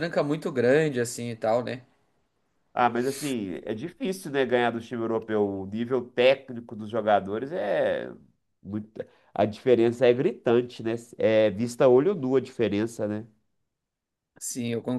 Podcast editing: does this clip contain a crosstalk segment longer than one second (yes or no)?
no